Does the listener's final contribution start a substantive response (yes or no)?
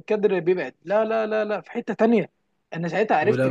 no